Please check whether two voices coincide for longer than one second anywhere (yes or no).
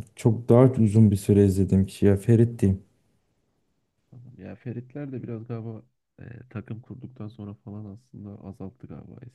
no